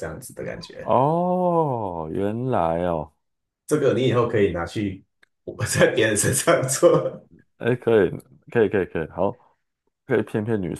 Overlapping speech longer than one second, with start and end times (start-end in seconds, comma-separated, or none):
none